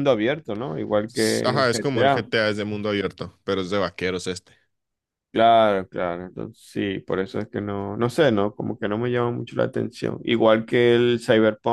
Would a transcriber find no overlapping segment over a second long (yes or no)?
no